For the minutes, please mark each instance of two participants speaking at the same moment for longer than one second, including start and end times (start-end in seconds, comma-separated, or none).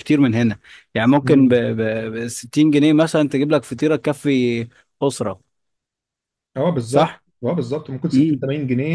none